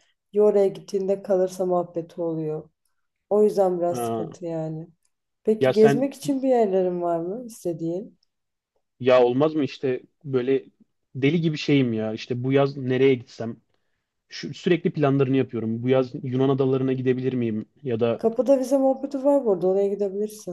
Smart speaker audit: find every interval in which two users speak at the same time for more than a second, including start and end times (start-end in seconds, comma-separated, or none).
none